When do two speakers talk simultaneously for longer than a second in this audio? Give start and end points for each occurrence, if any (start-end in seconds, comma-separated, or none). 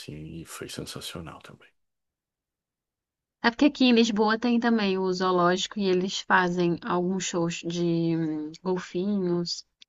none